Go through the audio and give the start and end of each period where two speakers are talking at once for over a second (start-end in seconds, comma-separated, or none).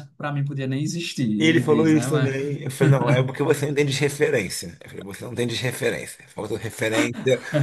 1.4-2.6